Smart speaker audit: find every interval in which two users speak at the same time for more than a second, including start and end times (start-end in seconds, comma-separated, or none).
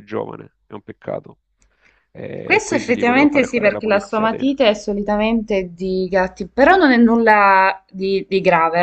2.4-4.7